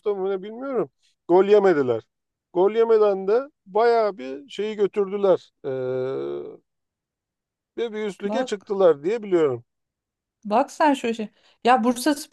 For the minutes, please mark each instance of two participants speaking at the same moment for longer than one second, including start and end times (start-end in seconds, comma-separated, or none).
none